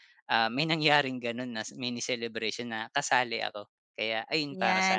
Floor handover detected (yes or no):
yes